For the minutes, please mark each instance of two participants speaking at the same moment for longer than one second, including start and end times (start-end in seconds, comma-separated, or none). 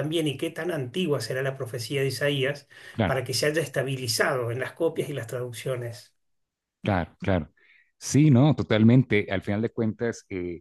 none